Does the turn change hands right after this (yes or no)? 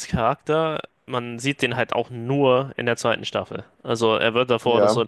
no